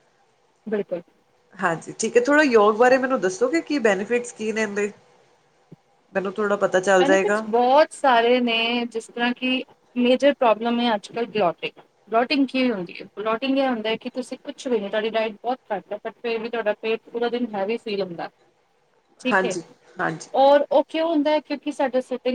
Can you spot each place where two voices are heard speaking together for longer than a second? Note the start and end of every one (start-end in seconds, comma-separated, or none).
none